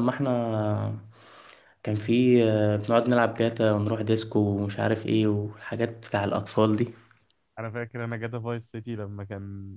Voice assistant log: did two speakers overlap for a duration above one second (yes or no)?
no